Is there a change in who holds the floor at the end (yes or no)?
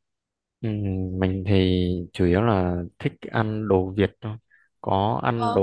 no